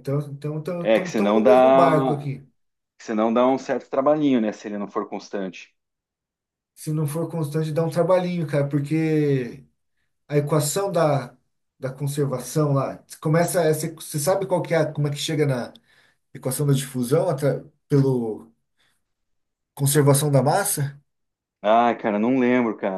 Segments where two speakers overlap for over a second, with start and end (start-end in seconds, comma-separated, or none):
1.1-2.3